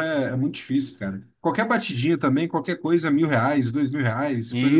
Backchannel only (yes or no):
no